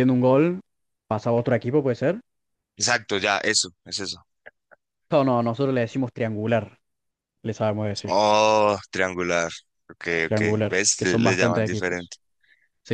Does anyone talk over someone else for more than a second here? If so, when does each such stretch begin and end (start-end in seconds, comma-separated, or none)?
10.2-12.1